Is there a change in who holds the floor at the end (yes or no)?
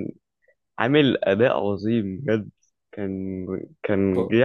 no